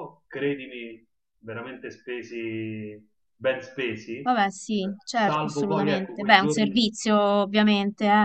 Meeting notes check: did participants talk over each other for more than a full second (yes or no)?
yes